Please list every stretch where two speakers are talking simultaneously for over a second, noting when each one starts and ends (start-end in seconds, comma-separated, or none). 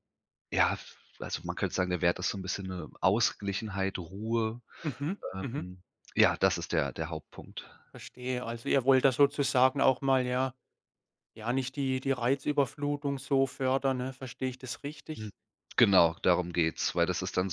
none